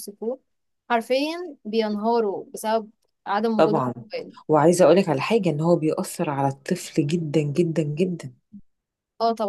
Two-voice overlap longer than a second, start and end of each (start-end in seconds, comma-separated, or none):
none